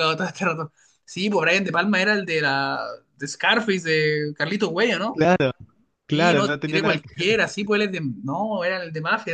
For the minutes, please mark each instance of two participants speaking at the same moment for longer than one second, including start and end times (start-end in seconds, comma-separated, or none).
6.1-7.3